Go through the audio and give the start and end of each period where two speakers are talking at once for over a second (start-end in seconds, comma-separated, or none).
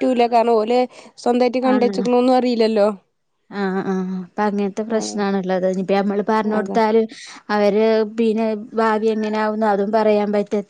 none